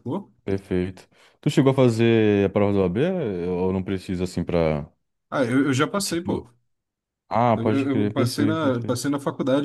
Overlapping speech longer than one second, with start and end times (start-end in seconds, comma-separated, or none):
7.5-9.1